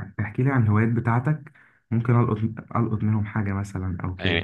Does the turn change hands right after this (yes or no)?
yes